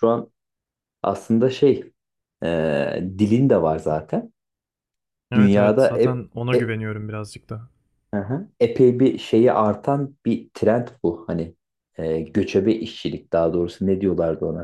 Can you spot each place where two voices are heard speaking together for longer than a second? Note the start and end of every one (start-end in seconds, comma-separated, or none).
5.3-6.8